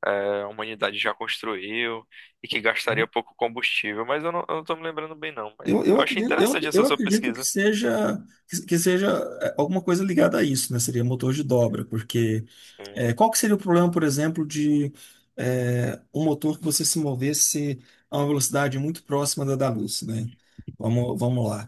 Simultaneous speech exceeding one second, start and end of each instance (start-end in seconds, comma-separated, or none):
5.6-7.5